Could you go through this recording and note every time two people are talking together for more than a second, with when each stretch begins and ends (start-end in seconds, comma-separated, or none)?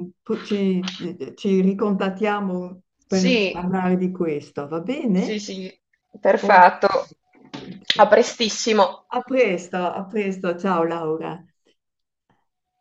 none